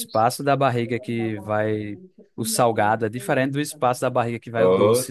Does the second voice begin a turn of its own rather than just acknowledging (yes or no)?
yes